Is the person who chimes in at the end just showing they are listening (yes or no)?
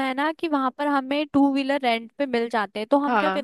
yes